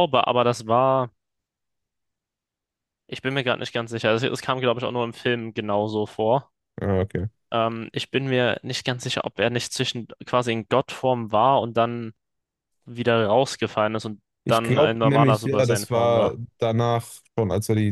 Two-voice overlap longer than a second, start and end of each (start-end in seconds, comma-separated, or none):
14.4-16.4